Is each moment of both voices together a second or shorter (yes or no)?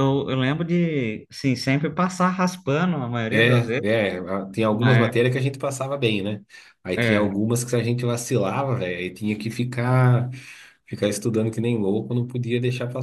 yes